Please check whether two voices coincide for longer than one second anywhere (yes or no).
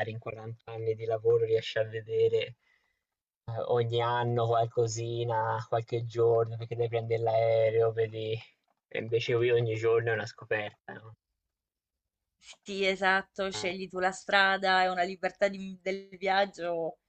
no